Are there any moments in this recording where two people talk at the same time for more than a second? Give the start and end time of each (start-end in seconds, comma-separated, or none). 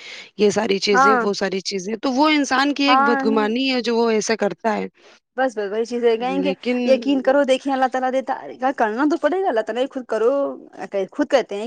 none